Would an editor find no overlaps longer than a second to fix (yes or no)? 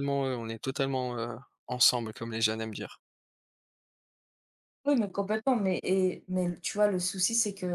yes